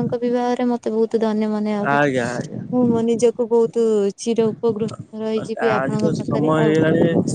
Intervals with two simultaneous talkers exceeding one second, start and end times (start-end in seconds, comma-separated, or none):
5.3-6.8